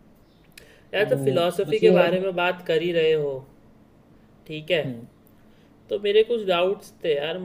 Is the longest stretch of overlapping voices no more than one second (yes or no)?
no